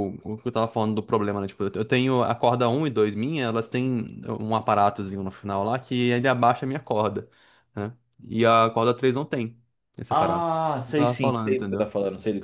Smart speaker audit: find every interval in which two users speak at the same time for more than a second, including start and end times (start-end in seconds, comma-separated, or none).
10.1-11.9